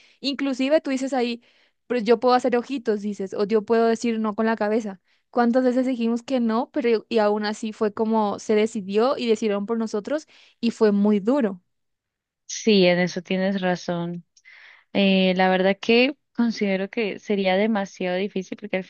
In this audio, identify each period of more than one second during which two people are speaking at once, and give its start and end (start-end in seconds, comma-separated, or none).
none